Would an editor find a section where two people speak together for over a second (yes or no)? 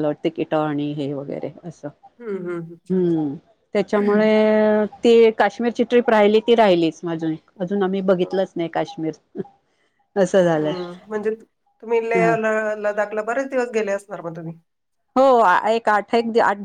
no